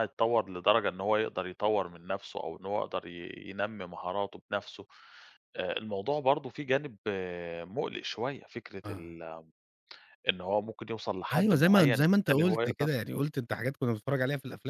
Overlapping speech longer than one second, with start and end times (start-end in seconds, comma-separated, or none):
11.3-12.9